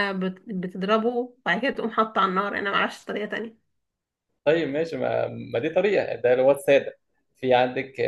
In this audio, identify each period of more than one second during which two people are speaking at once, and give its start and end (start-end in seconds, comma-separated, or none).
none